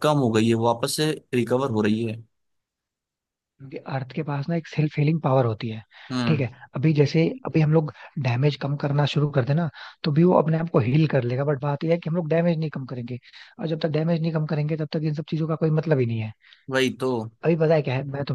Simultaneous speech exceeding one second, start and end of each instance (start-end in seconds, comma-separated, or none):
none